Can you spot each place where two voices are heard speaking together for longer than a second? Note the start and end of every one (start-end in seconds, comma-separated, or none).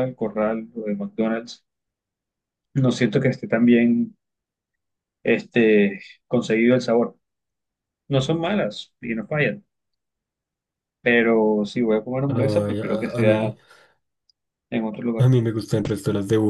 12.3-13.6